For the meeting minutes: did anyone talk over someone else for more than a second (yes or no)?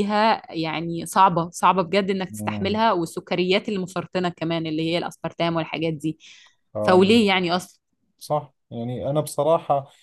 no